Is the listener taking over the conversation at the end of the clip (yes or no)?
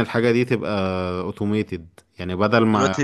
no